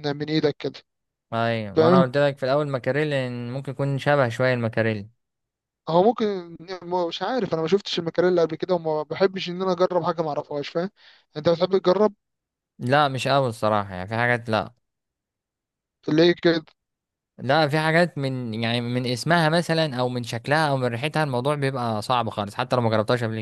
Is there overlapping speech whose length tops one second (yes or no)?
no